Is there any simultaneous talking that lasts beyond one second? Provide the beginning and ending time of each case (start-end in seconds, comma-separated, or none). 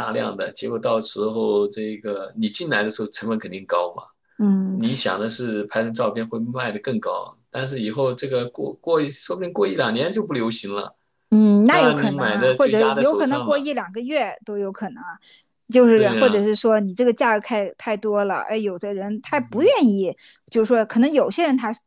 11.7-13.7